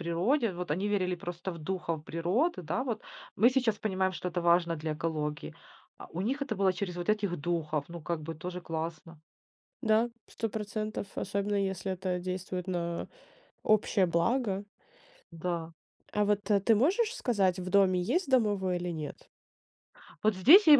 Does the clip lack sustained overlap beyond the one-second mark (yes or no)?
yes